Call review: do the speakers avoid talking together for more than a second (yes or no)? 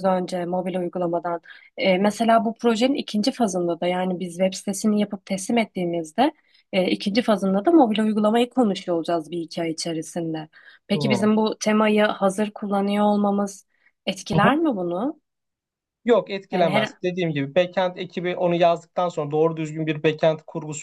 yes